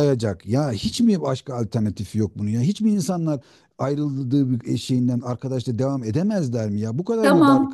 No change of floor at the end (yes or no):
no